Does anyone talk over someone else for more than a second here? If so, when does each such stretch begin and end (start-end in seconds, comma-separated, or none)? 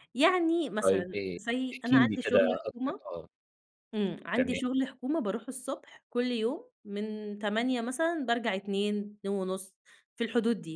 0.8-3.0